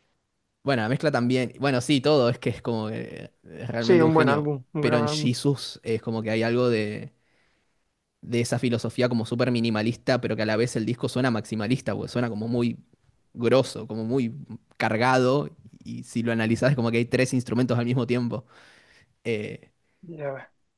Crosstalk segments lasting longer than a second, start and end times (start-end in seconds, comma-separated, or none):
3.8-5.3